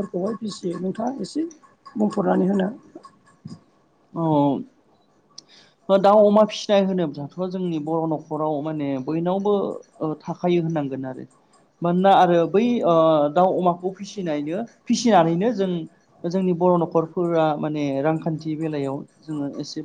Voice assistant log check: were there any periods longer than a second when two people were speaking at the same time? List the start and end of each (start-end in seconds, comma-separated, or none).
none